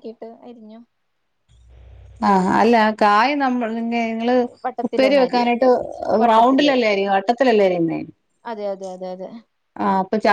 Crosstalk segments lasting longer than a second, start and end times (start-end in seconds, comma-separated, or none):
none